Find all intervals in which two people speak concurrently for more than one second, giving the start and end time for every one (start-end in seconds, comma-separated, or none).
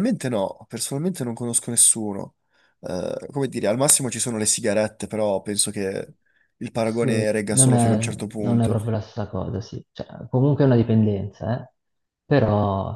6.8-8.8